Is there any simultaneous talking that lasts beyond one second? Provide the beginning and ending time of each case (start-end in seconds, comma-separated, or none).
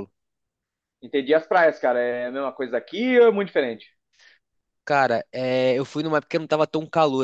none